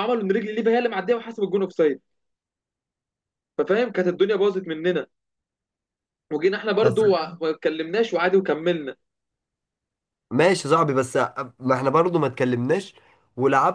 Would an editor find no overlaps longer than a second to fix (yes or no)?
yes